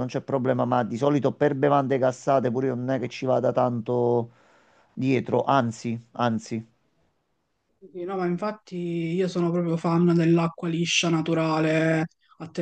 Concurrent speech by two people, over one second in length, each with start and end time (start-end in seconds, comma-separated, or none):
none